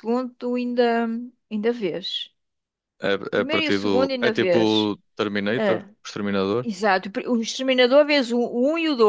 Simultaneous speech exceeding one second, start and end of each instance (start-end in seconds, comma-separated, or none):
3.3-4.6